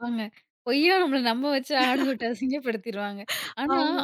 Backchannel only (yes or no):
yes